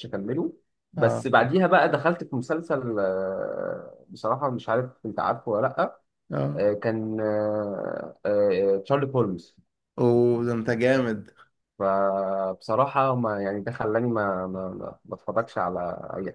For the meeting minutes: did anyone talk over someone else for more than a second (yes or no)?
no